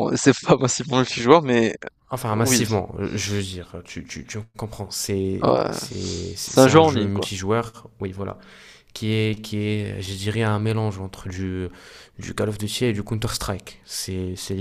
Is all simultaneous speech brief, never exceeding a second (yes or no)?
no